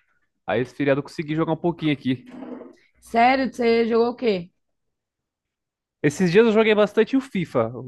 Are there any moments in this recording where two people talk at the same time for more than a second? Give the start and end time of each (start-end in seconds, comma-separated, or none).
none